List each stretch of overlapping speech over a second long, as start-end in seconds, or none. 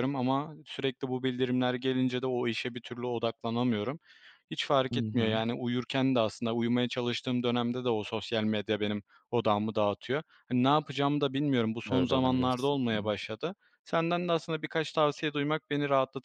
11.9-13.2